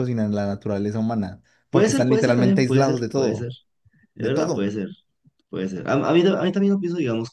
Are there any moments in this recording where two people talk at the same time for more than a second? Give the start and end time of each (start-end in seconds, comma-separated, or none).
1.7-3.5